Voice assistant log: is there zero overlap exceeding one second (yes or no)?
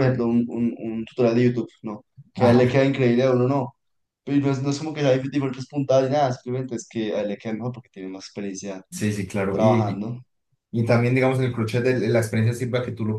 yes